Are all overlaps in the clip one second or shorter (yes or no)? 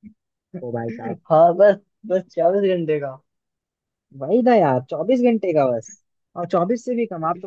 yes